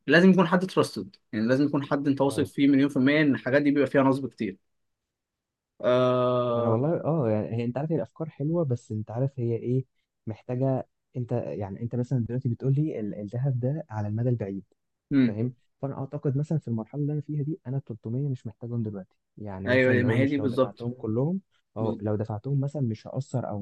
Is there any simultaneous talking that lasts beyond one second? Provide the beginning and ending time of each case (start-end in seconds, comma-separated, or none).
19.7-20.9